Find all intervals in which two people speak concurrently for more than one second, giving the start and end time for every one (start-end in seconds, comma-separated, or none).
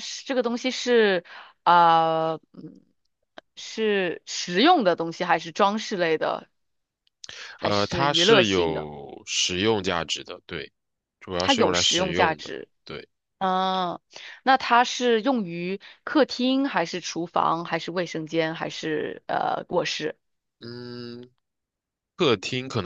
7.6-8.9, 11.4-12.7